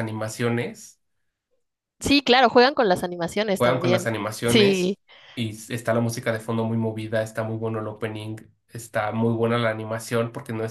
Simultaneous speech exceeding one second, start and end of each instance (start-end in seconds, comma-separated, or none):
3.6-5.0